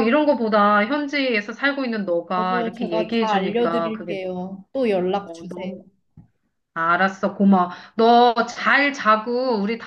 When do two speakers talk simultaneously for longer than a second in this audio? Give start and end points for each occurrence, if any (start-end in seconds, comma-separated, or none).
2.4-4.2